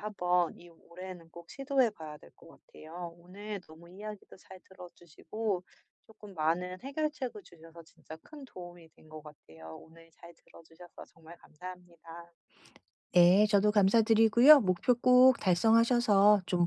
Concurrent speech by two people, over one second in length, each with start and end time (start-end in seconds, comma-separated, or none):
none